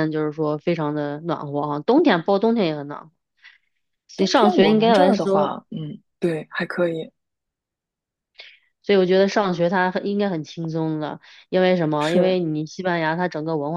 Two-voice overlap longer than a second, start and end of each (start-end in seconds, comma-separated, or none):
4.2-5.5